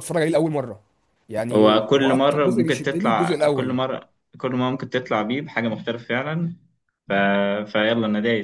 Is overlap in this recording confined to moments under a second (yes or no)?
no